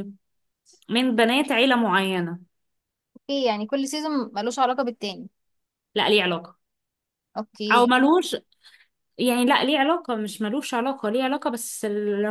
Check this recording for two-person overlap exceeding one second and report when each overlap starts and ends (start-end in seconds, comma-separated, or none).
none